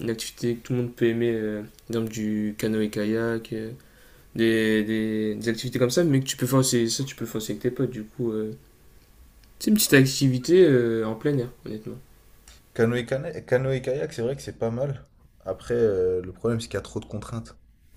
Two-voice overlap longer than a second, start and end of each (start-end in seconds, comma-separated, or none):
none